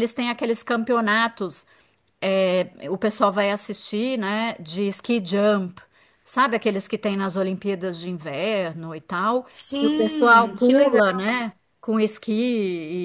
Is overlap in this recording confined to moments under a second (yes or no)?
no